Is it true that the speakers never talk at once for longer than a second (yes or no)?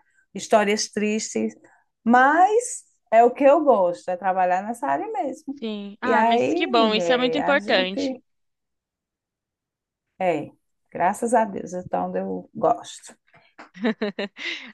no